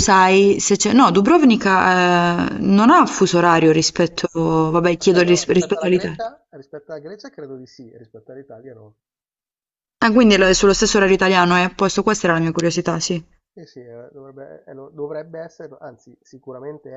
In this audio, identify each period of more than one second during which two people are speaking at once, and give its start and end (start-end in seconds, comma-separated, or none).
5.0-6.2